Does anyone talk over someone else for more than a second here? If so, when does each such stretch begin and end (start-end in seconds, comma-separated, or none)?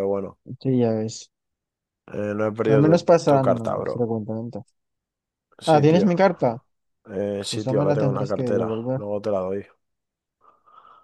2.7-4.1, 7.5-9.0